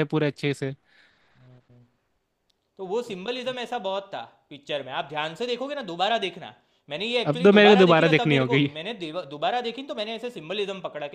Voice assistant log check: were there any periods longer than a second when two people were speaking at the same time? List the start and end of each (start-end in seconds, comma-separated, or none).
7.3-8.7